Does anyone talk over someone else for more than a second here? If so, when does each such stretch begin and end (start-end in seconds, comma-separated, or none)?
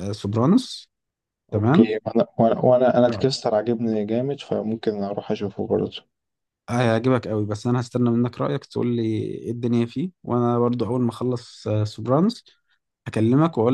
none